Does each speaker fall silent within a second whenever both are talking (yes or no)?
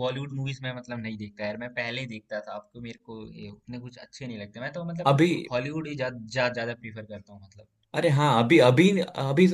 yes